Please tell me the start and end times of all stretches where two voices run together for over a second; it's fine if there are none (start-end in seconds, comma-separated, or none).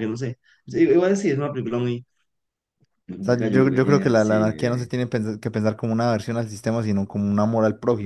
3.2-4.9